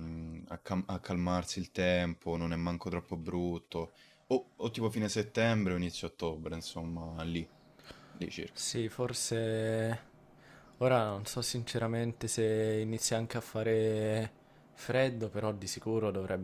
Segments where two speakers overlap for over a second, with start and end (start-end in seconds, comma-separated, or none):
none